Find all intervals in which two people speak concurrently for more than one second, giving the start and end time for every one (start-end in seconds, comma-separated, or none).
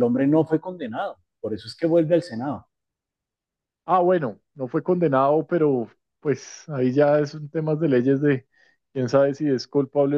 none